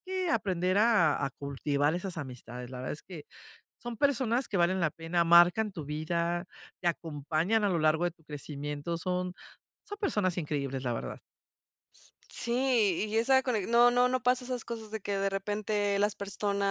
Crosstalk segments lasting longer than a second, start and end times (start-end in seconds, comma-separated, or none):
none